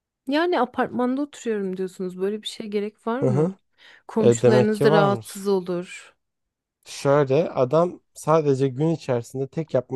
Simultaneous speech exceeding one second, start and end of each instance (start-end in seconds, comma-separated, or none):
4.2-5.4